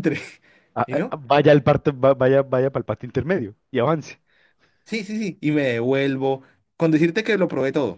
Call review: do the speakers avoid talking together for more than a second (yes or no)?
yes